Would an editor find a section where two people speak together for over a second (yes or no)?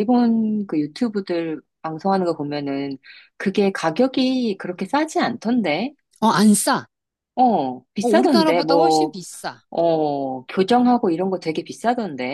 yes